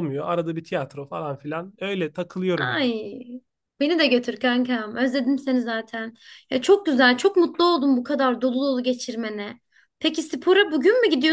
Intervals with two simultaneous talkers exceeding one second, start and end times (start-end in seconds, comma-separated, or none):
none